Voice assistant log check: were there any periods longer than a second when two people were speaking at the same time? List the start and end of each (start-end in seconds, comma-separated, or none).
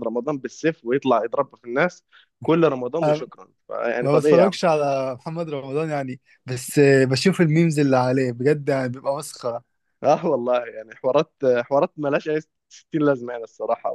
none